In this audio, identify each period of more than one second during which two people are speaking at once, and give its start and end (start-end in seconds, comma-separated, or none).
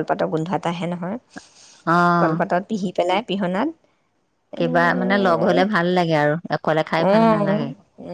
none